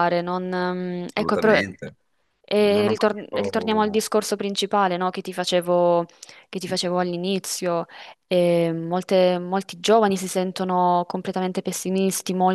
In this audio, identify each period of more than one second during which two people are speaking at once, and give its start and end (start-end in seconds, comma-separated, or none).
2.6-4.0